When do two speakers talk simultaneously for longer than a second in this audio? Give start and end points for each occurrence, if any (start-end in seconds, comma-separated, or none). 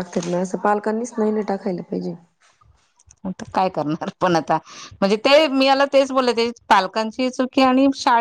none